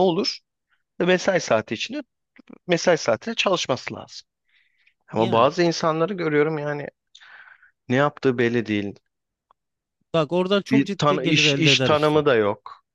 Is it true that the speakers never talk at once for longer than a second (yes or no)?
no